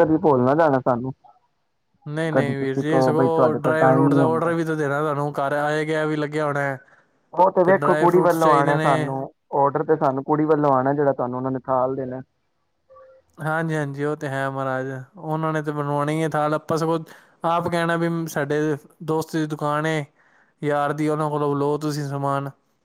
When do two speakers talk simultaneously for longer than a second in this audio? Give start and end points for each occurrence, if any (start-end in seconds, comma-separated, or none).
2.3-4.5, 7.7-9.1